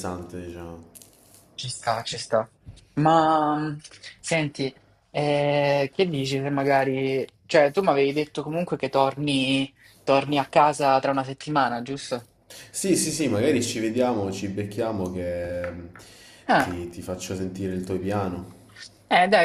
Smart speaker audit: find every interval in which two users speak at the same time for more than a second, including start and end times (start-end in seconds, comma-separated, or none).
none